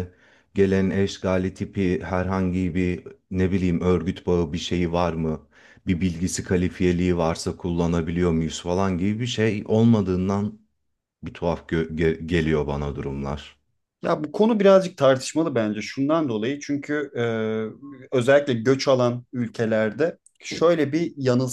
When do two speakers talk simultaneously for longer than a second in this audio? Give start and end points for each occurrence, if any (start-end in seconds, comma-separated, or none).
none